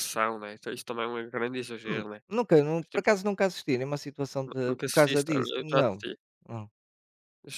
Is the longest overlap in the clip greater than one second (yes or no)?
yes